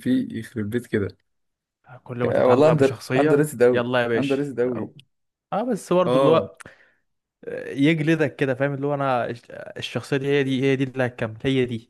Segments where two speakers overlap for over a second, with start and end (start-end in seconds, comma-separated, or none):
2.2-4.9